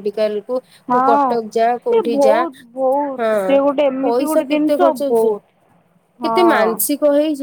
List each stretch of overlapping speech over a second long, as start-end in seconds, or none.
3.2-5.4